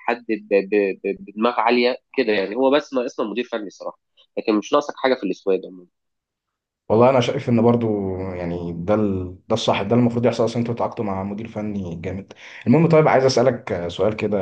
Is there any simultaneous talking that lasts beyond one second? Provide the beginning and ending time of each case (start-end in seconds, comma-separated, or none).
none